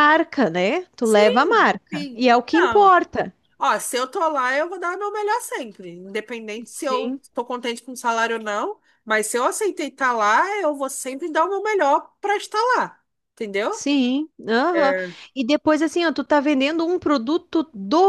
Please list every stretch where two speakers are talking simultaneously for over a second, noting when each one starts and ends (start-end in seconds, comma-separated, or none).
1.0-2.9